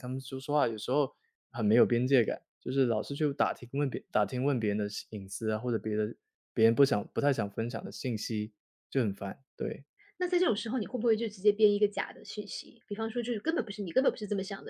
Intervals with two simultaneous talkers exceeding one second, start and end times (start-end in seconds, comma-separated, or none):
none